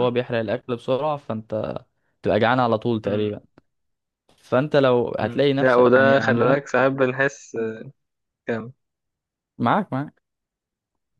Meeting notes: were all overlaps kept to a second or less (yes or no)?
no